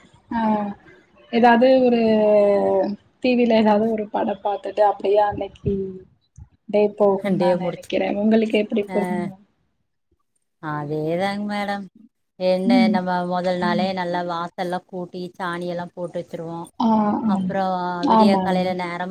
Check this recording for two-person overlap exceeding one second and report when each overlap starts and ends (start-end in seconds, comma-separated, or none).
none